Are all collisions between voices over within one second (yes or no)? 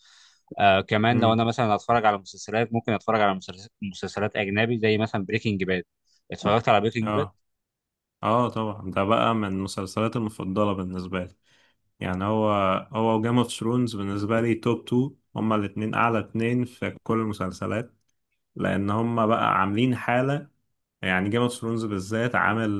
yes